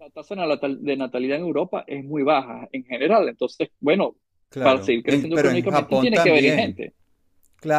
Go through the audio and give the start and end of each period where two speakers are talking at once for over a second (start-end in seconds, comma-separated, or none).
4.6-6.8